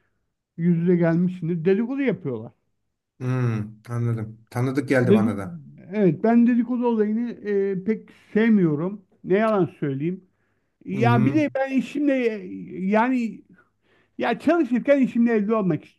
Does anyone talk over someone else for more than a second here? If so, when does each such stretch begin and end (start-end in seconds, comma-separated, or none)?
none